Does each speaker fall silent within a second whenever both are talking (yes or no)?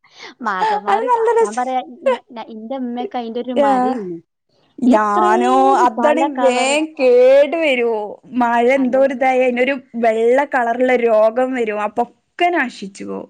no